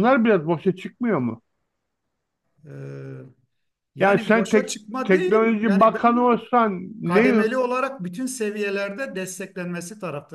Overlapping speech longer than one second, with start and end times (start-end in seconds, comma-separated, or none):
4.0-6.4